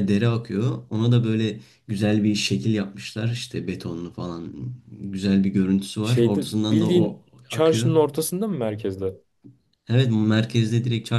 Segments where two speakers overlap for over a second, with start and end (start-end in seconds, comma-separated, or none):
6.0-7.9